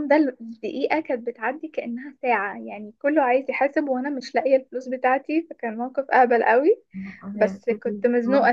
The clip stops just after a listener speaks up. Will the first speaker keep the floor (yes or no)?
yes